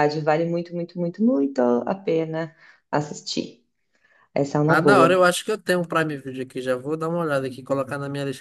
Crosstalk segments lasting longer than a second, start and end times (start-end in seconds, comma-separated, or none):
none